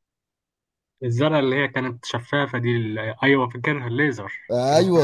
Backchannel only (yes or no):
no